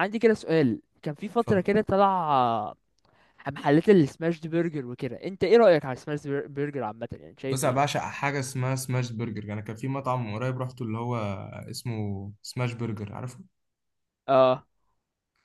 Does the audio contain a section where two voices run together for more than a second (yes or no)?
no